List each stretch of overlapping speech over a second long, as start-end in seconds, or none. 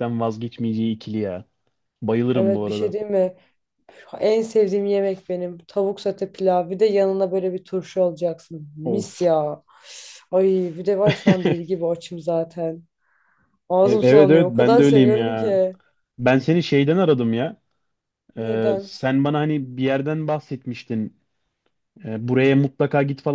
13.8-15.6